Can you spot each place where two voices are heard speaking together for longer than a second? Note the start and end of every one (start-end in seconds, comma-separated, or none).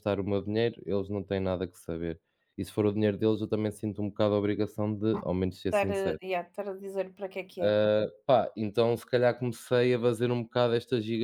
none